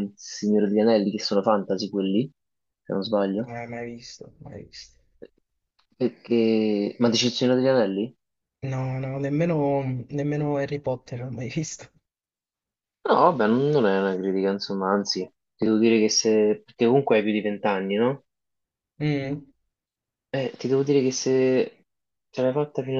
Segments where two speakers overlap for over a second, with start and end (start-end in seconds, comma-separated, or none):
none